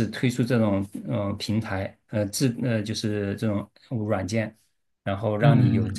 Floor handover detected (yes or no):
yes